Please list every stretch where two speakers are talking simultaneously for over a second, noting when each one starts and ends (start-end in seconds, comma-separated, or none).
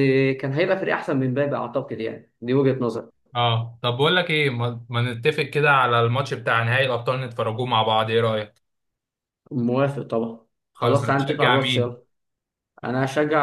10.7-12.0